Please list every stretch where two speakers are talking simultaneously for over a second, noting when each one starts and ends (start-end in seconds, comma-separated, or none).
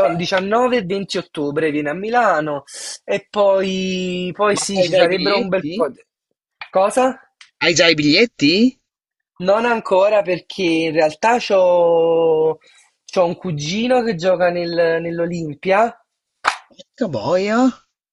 4.5-5.9